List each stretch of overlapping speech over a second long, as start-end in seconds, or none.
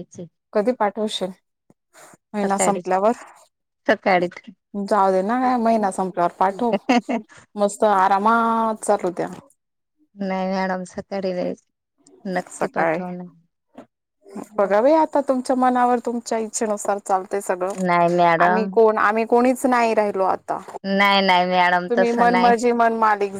21.0-22.5